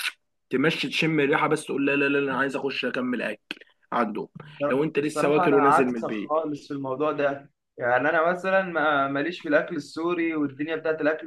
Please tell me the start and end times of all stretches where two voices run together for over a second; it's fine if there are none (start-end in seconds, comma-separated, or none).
5.0-6.3